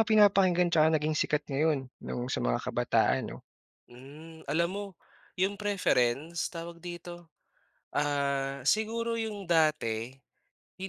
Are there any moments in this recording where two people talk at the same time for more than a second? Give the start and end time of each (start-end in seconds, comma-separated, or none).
none